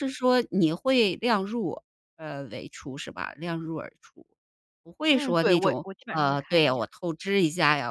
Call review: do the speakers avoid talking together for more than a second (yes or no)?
no